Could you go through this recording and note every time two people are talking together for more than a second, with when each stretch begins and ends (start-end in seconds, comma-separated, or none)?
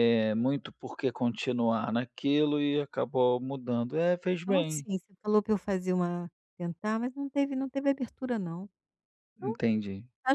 none